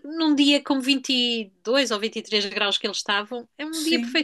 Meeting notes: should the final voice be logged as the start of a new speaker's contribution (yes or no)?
yes